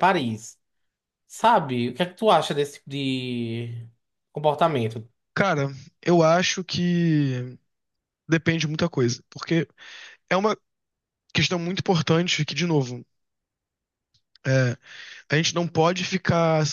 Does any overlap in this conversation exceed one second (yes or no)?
no